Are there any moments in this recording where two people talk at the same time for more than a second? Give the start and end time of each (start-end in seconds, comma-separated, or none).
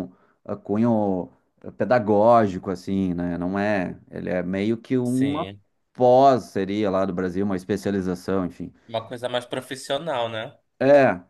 none